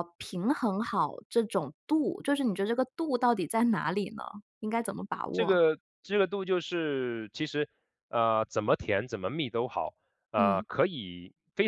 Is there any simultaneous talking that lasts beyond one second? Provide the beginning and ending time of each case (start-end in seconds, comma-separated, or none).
none